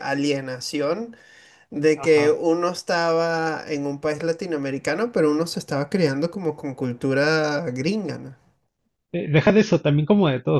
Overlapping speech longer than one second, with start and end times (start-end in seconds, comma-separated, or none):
none